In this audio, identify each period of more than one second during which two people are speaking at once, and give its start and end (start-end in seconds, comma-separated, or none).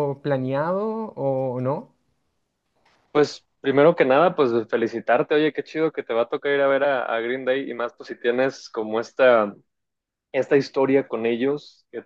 none